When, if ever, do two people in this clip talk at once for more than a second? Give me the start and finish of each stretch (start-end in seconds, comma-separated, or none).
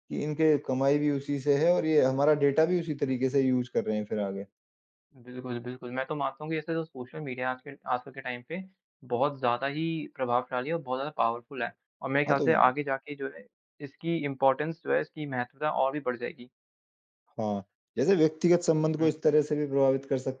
none